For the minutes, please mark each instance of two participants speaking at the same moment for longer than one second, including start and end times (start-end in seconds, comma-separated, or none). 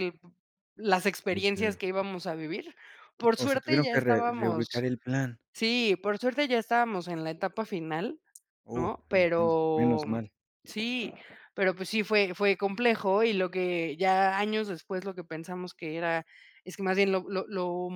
3.4-4.9, 8.7-10.2